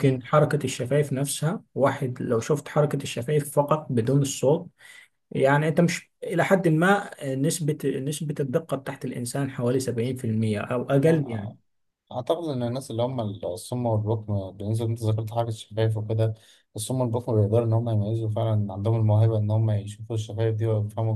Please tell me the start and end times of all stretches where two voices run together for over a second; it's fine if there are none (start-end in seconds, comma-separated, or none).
none